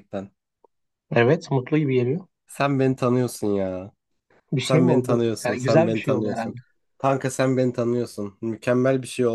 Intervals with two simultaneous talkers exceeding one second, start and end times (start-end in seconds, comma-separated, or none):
4.6-6.5